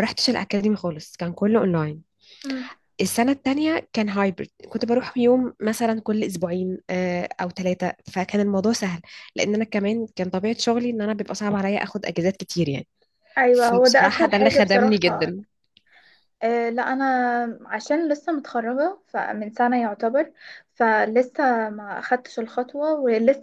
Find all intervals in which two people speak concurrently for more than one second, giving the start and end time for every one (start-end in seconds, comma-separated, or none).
13.5-15.3